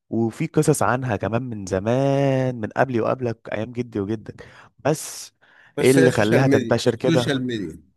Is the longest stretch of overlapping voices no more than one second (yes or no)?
no